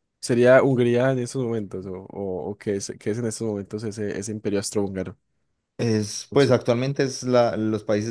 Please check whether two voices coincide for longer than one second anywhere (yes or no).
no